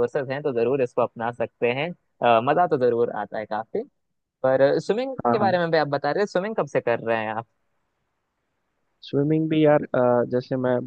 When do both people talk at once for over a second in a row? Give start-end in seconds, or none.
none